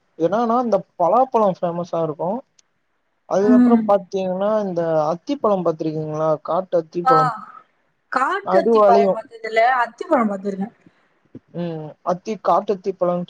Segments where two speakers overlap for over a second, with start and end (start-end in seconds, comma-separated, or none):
none